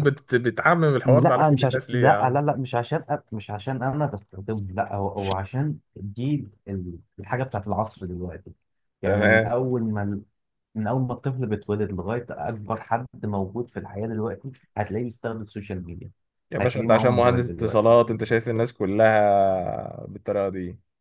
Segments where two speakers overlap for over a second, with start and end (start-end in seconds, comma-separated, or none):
1.0-2.4, 16.6-17.9